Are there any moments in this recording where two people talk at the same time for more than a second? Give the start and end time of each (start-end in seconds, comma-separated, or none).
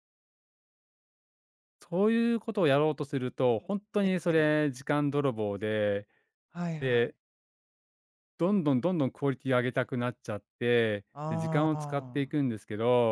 11.1-12.5